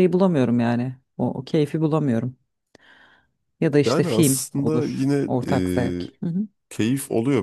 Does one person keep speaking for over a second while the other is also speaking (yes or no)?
yes